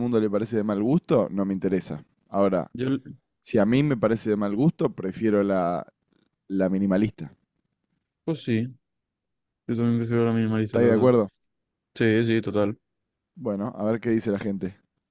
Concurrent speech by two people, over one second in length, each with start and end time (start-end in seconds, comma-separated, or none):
none